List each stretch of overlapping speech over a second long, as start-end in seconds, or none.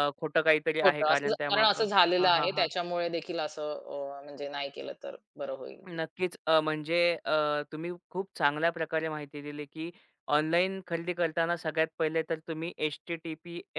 0.8-2.7